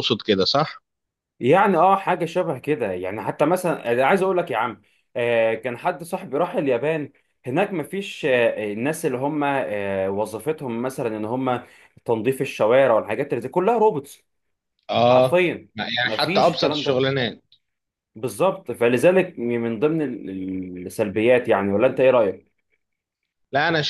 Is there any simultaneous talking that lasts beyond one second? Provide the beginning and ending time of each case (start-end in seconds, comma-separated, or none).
15.1-17.1